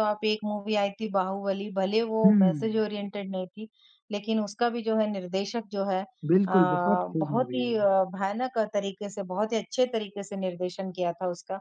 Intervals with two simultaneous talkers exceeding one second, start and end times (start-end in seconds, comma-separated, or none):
6.3-7.9